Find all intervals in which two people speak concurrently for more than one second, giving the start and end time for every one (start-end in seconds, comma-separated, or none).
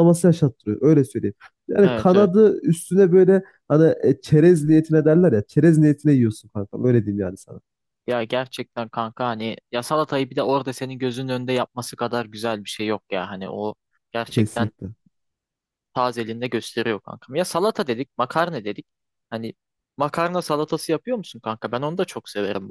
none